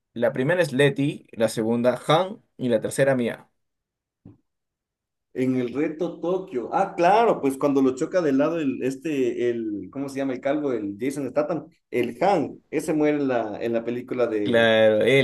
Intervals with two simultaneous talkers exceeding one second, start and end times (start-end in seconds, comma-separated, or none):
none